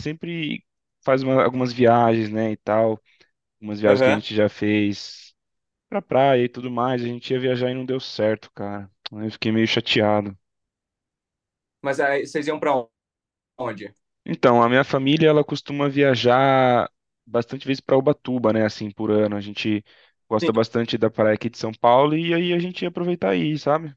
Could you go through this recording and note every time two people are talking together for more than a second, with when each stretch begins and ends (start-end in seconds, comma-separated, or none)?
none